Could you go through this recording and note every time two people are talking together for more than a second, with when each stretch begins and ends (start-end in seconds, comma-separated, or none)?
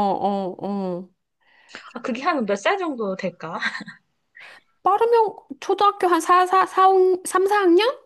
none